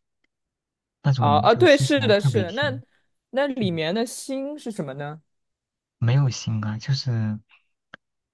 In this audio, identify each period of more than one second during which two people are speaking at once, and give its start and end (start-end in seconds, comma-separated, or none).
1.2-2.8